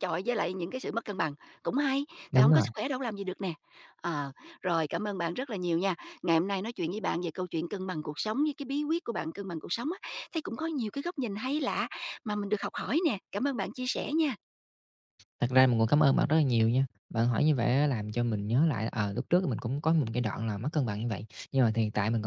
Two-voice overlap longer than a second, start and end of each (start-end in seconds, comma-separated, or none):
none